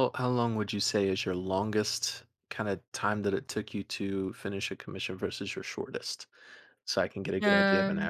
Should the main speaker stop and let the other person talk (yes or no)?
yes